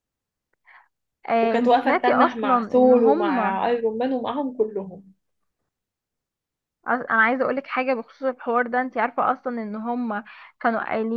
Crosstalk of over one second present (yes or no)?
yes